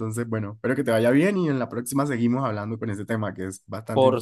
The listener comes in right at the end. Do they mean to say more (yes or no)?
yes